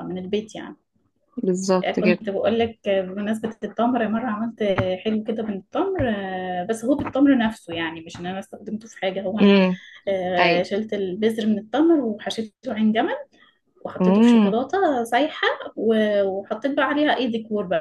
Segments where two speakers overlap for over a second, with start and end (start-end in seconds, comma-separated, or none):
none